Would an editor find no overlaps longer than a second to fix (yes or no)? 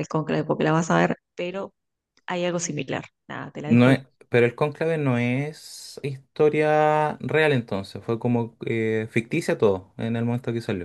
yes